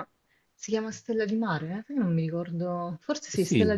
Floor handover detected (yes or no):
yes